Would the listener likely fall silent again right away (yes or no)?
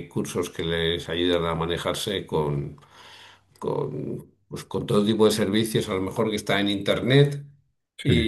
yes